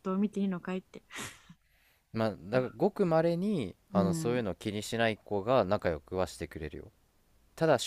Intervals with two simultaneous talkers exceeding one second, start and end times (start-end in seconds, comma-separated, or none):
none